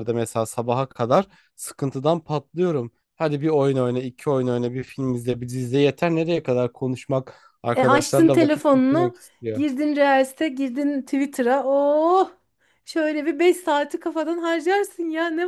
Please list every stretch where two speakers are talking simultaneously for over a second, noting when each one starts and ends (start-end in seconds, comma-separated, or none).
7.8-9.7